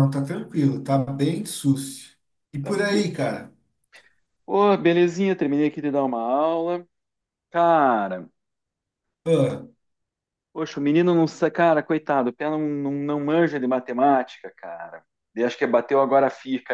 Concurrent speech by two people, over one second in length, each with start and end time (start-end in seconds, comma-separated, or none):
none